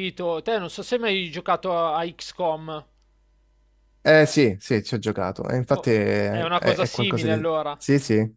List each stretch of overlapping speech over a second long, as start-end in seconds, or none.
5.7-7.8